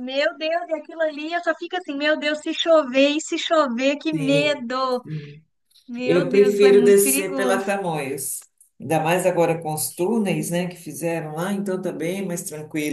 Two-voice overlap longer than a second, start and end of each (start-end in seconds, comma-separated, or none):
6.0-7.7